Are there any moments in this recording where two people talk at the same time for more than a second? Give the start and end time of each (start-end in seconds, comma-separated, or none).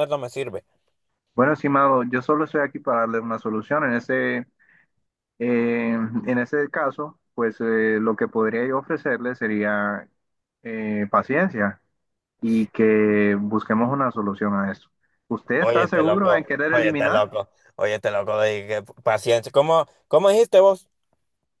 15.6-17.2